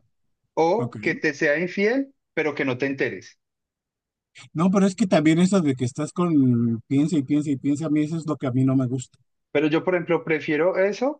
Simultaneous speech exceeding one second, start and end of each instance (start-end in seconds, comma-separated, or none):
none